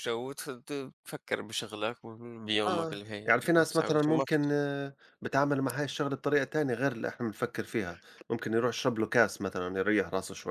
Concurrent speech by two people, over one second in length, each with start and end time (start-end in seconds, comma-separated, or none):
2.7-4.5